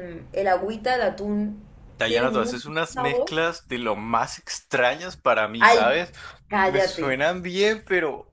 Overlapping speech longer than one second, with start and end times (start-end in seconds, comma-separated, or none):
2.1-3.3